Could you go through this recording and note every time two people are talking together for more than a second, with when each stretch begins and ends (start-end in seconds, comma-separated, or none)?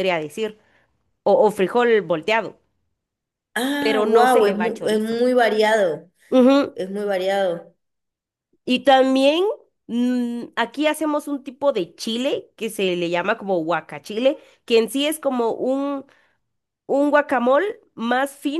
3.8-5.2